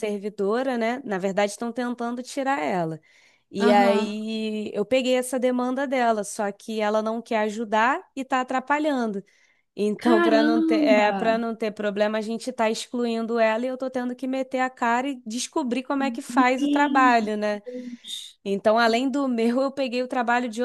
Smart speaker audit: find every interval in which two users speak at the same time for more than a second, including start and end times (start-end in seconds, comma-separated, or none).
10.0-11.3